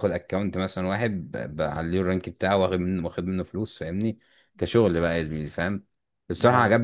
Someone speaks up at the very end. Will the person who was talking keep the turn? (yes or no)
yes